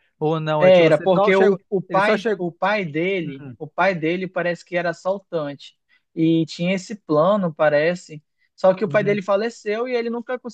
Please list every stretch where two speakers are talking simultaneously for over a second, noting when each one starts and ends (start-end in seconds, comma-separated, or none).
0.6-2.4